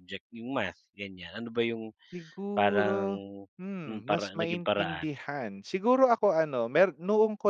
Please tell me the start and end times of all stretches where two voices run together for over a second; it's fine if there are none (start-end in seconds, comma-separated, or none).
3.9-5.1